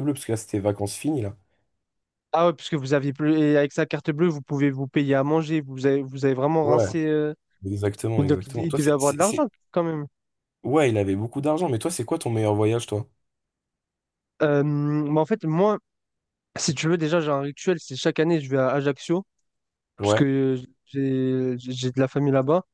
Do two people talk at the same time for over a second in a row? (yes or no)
yes